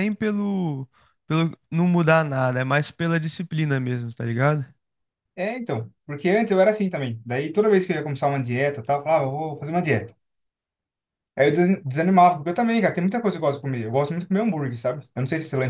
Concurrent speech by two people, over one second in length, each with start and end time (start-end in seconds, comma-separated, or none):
none